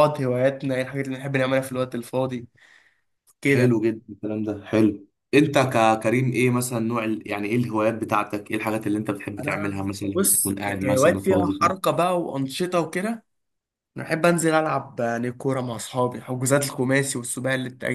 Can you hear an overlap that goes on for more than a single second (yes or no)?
yes